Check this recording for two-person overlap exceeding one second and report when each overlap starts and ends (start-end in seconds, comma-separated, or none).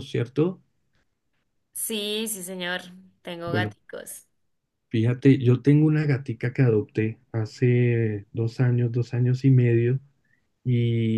none